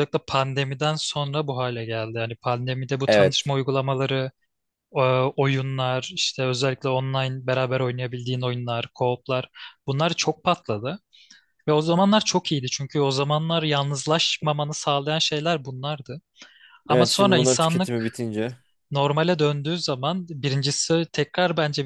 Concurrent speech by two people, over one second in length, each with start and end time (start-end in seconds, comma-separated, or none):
16.9-18.2